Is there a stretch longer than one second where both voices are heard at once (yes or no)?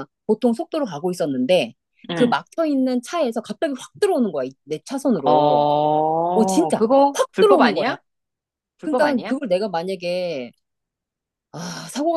yes